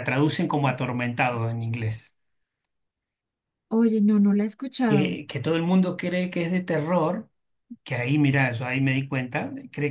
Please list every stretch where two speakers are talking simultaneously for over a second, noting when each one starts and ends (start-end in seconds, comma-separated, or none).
none